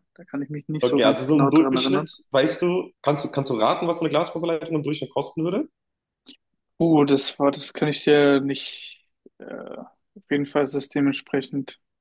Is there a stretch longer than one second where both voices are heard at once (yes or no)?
yes